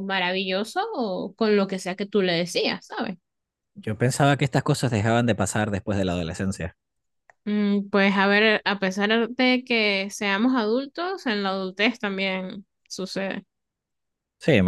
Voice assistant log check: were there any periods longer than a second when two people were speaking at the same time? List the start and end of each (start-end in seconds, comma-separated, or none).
none